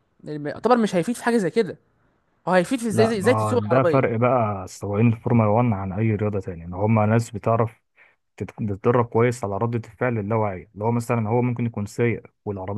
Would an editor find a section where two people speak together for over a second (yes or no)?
yes